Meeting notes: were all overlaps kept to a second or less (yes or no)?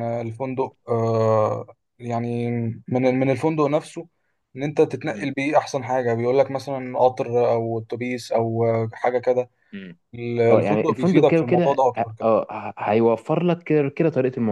no